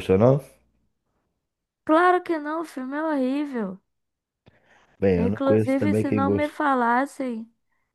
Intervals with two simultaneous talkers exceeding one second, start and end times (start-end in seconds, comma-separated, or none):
5.2-6.5